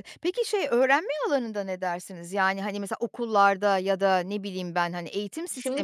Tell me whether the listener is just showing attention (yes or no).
no